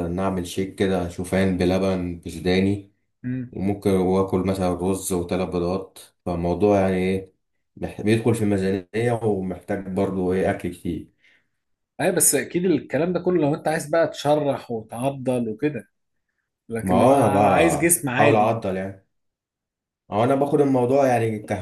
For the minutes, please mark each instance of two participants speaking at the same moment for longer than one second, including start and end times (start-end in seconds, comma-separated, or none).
16.8-18.6